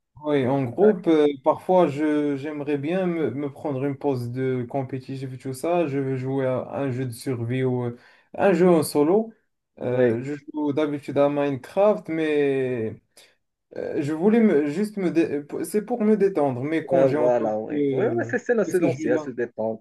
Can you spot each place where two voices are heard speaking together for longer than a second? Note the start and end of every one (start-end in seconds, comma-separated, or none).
16.9-19.3